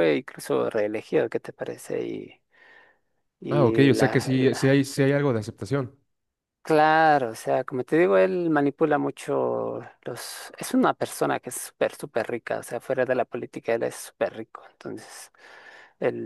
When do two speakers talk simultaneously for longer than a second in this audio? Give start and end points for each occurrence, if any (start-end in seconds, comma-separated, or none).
3.5-4.8